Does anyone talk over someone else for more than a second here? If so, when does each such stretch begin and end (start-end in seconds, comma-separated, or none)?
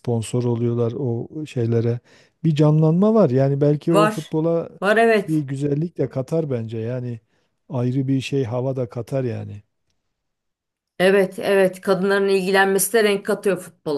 none